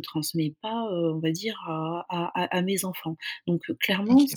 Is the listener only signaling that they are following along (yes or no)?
yes